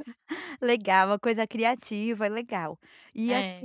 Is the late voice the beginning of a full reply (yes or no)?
no